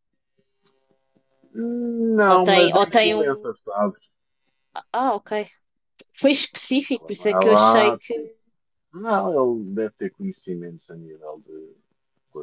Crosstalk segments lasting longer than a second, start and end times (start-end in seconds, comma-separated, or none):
2.2-3.5, 6.9-8.1